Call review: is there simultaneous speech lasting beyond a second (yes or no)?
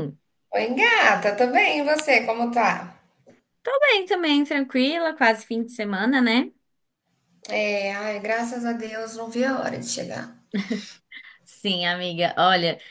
no